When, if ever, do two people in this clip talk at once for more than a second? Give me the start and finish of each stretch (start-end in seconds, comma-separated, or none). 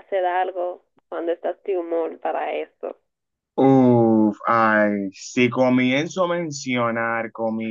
none